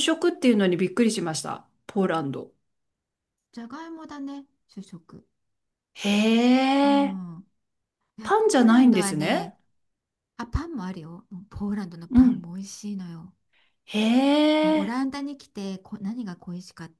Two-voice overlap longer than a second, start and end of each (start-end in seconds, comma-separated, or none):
8.2-9.5